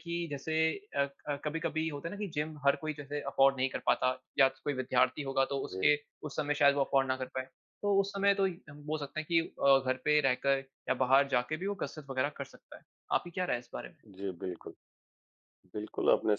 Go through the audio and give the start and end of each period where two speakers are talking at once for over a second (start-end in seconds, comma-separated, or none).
none